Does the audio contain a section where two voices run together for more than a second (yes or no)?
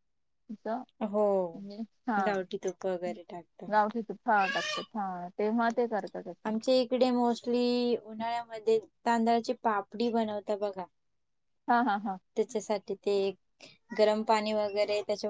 no